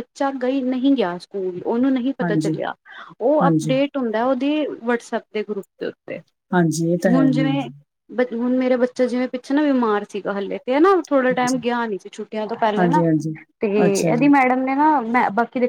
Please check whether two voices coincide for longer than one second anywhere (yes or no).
no